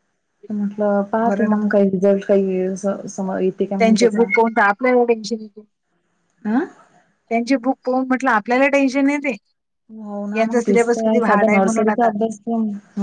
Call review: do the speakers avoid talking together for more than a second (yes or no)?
no